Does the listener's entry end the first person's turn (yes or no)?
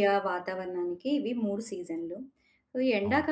no